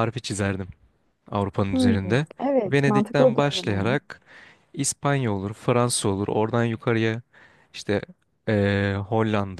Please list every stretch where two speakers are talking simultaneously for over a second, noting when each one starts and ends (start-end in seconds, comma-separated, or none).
2.6-3.9